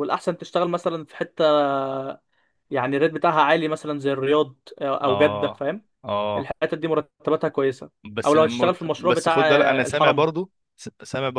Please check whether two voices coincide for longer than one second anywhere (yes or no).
yes